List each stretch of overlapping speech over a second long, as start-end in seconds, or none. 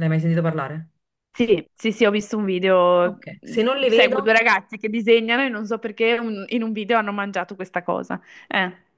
none